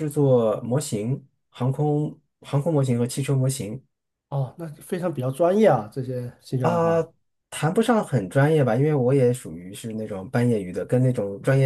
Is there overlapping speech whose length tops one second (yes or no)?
no